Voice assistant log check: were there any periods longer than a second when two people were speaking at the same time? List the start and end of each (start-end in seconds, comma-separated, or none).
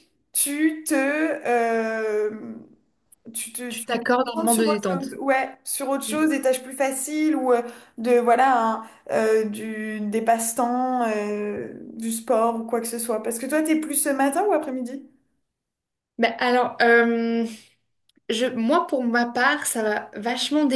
3.7-5.2